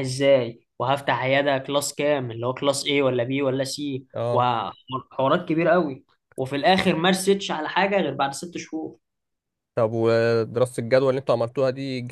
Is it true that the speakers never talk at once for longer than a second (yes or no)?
yes